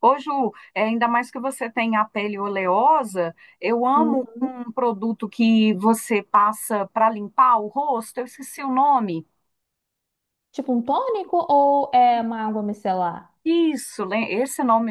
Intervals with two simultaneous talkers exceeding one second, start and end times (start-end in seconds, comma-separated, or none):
none